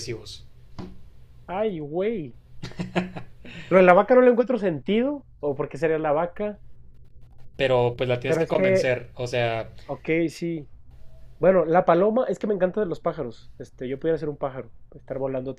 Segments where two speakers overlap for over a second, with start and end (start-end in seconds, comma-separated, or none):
none